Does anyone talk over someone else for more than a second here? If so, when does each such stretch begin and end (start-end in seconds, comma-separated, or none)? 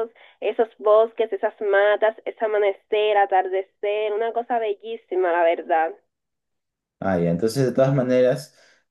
none